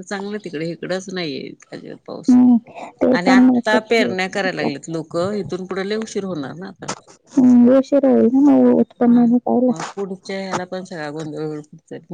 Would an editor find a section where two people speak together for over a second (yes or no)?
yes